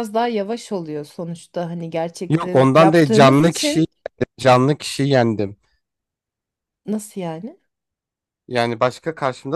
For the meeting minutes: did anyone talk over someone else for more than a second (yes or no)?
yes